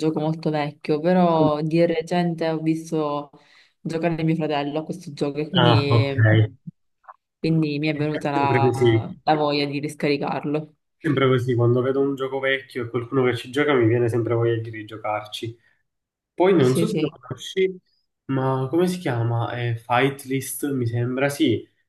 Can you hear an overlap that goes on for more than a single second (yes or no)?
yes